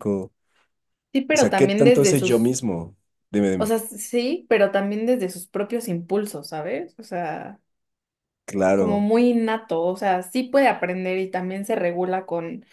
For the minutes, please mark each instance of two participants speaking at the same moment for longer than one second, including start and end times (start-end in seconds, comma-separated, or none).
1.3-2.5